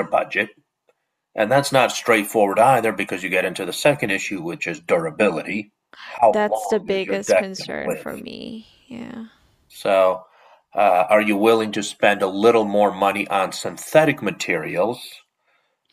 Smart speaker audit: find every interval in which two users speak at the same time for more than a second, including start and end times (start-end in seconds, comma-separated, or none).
6.3-8.1